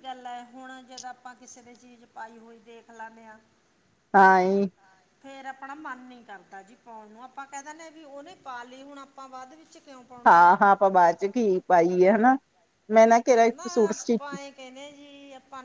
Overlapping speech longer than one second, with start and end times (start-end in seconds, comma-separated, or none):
none